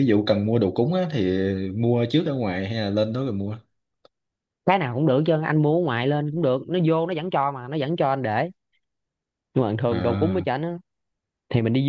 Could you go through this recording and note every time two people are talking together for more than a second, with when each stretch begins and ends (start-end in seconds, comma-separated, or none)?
none